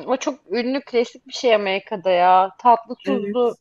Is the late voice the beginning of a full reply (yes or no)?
no